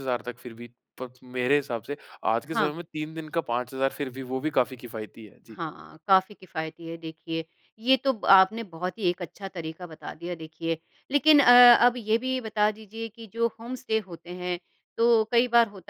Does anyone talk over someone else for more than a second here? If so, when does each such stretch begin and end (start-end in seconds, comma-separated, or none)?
none